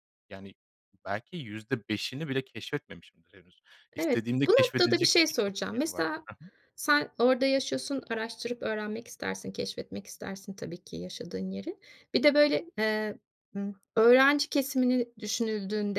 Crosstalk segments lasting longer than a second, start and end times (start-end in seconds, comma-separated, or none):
3.9-6.3